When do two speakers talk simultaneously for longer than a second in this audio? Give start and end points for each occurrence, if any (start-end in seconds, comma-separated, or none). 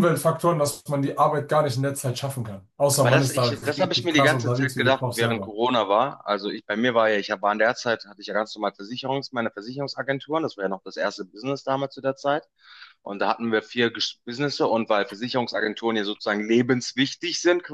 3.0-5.5